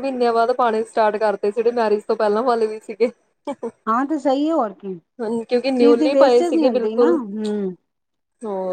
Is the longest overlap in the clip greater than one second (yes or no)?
yes